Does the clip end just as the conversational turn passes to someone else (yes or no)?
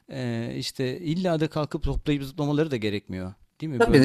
yes